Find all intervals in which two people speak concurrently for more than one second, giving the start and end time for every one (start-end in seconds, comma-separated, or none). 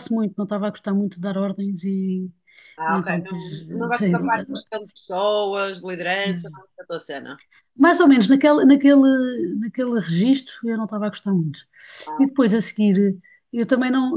2.9-4.6